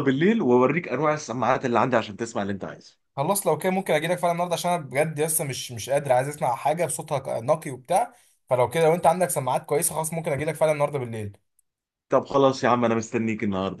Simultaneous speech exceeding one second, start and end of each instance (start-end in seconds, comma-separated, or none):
none